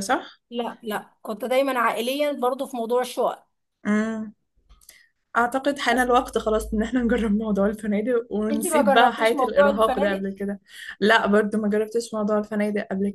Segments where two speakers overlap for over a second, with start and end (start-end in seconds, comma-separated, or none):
8.5-10.3